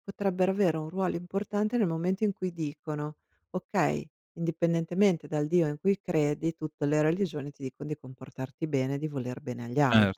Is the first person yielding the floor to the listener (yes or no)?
yes